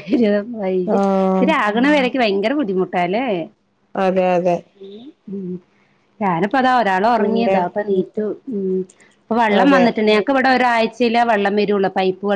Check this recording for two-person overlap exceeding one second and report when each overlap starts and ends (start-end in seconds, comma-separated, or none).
none